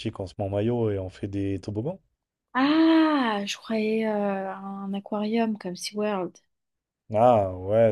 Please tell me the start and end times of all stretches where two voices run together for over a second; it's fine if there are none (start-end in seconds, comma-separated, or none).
none